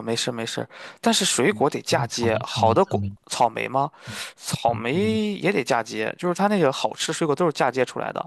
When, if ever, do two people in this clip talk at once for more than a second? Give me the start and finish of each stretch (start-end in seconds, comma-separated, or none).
1.5-3.1